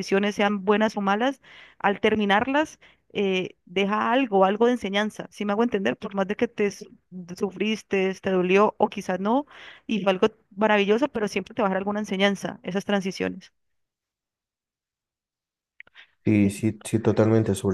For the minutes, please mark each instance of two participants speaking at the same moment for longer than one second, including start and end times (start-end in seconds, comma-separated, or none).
none